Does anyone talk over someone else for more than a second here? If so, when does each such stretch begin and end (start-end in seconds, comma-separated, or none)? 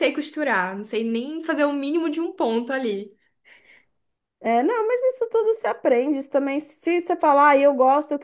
none